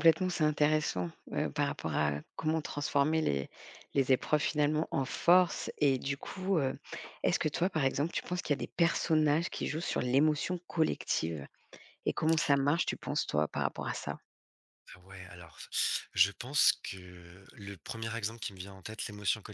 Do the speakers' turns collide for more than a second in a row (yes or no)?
no